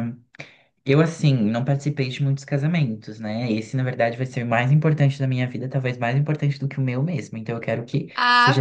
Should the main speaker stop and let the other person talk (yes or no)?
no